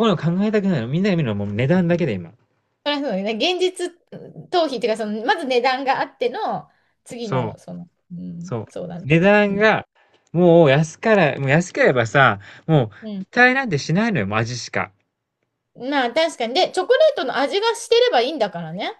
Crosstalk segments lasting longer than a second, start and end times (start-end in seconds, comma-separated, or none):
none